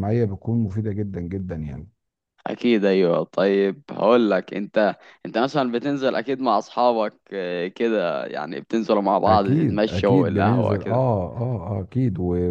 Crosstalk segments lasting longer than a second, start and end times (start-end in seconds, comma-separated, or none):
9.3-10.9